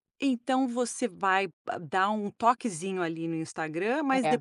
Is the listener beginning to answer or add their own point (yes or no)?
no